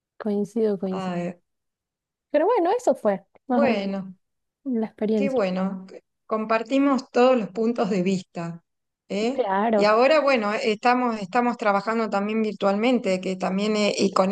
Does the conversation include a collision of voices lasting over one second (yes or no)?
no